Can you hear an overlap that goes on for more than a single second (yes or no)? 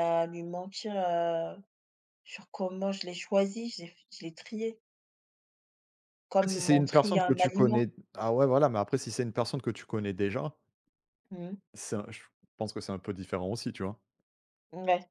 yes